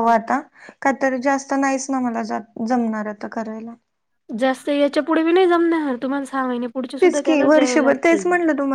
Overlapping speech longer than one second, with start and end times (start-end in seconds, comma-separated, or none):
7.0-8.2